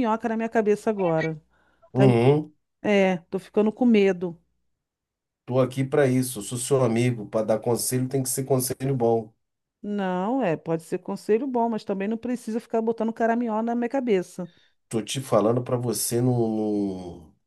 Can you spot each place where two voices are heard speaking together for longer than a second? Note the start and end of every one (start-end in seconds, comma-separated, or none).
none